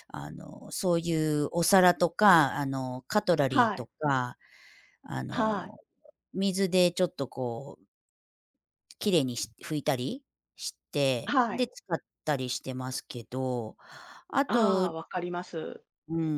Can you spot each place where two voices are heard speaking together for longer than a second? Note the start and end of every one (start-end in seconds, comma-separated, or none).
none